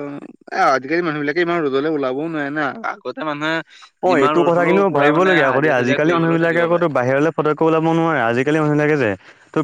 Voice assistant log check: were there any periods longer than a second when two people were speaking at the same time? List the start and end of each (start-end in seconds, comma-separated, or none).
4.1-6.7